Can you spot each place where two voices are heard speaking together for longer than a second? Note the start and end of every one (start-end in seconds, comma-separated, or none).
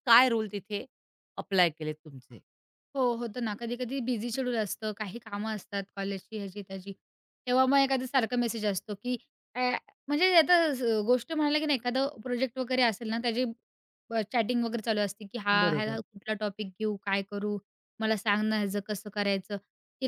none